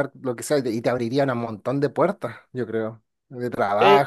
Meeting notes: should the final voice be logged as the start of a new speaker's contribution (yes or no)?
no